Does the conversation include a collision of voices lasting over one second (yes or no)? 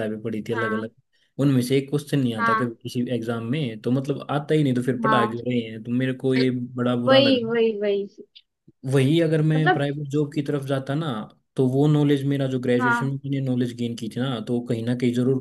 no